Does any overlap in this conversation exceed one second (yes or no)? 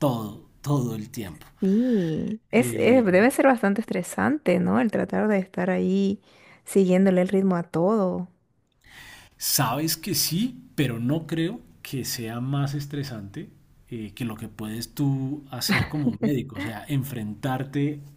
no